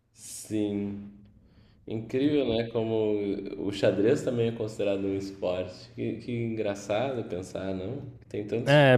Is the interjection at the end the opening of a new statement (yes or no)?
yes